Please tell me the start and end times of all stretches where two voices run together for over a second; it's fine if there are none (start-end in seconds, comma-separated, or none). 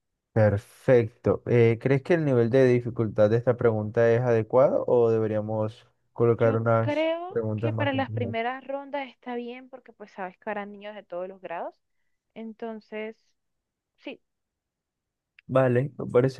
6.4-8.4